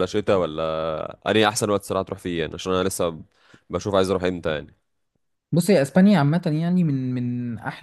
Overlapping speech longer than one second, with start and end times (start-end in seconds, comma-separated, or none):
none